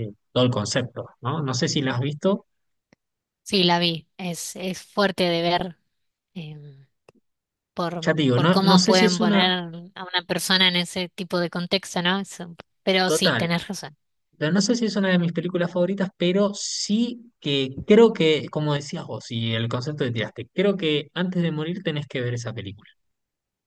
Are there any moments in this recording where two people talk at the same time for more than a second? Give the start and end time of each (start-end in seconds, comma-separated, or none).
8.0-9.5